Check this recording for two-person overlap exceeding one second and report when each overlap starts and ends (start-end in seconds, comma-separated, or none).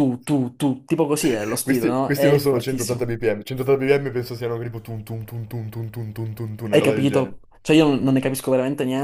1.6-3.1